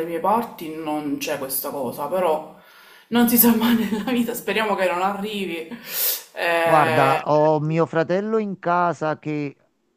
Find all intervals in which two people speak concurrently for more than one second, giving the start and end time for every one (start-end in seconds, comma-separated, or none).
none